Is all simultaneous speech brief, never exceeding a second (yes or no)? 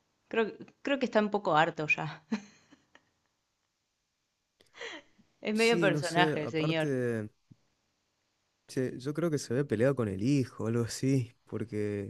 no